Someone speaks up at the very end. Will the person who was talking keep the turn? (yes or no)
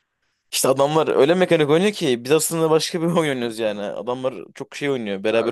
no